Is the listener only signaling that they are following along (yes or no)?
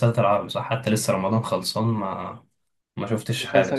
no